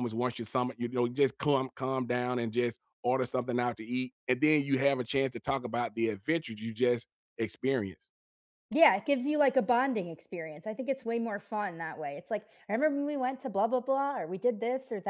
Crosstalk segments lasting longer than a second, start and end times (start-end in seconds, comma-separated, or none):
none